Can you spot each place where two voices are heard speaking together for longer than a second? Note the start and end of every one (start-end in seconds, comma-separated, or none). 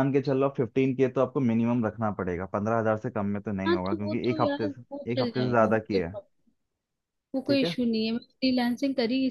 3.7-6.1